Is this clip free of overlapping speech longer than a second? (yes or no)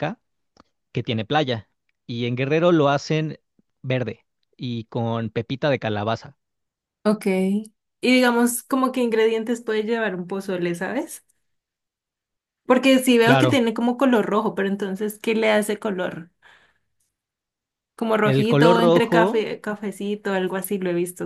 no